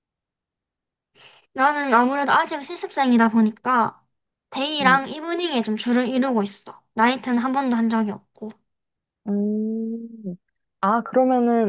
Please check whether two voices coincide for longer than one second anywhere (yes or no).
no